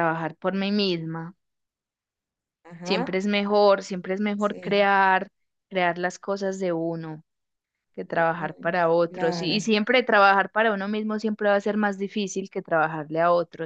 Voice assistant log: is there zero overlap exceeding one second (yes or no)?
no